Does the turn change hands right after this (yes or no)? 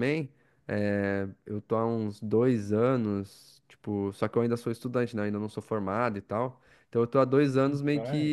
no